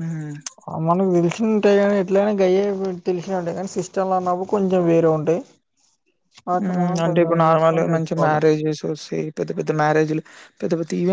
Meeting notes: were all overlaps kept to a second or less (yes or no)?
no